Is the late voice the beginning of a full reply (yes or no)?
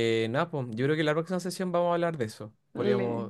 no